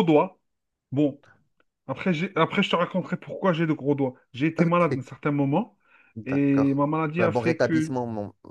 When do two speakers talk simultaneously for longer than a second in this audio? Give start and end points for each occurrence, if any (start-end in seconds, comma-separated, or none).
6.2-8.0